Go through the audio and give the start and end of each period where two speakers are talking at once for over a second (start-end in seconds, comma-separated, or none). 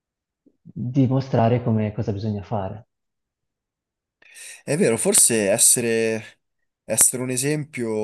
none